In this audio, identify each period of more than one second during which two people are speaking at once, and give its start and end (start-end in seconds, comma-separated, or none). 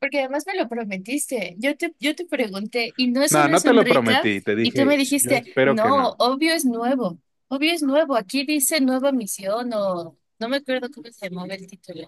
3.3-6.2